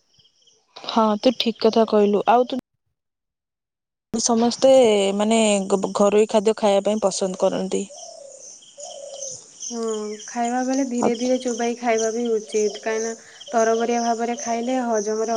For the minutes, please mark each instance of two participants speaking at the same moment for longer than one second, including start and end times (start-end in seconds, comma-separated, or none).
none